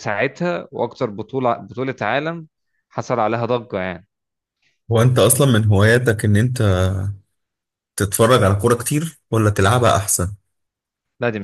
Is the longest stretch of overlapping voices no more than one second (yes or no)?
yes